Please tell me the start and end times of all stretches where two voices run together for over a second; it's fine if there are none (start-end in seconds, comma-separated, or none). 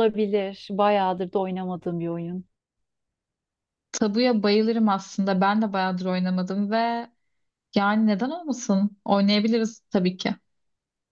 none